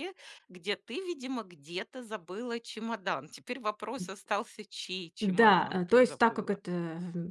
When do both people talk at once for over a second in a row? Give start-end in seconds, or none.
5.2-6.6